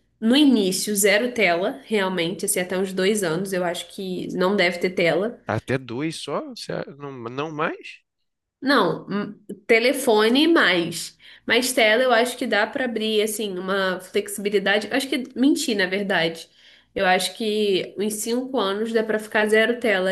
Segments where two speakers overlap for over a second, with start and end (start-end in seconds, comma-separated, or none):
none